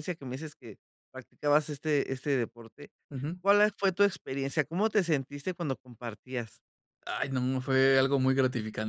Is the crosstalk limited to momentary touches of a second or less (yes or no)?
yes